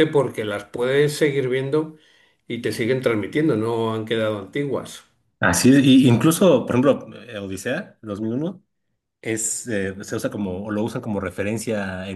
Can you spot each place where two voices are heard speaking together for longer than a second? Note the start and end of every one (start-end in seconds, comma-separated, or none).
none